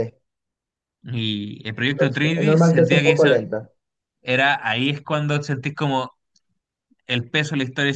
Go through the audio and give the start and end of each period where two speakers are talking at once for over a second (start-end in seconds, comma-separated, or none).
1.9-3.4